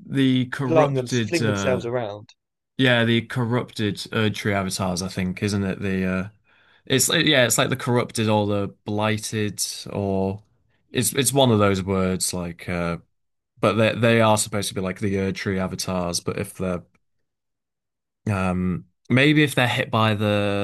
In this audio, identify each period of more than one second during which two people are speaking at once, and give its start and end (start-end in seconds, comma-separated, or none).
0.7-1.9